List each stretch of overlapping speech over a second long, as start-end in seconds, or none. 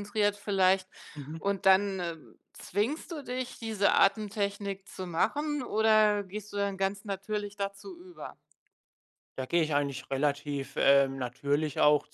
none